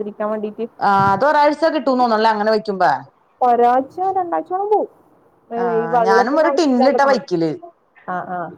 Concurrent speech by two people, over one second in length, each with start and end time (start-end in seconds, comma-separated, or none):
5.8-7.3